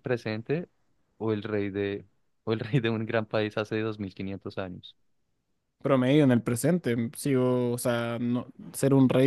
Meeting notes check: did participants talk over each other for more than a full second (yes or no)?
no